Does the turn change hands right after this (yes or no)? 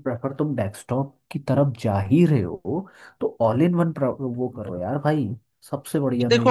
yes